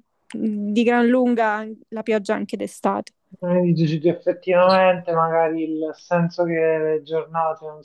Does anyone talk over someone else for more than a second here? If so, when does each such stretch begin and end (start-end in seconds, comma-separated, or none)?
none